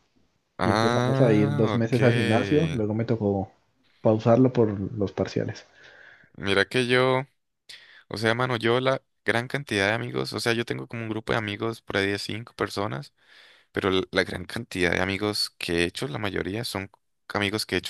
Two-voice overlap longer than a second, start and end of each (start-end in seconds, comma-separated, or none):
0.6-1.9